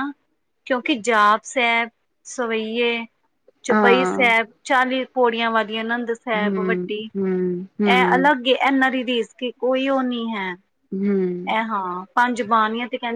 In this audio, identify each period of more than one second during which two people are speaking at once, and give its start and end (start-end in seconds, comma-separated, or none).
6.3-8.3